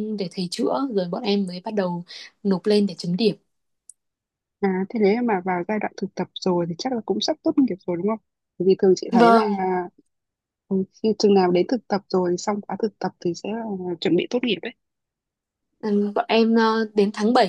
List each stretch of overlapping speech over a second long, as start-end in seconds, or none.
none